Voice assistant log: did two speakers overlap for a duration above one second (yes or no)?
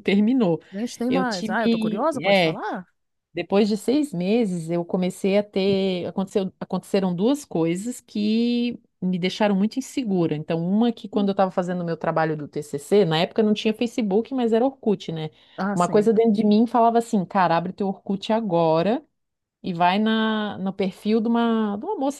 yes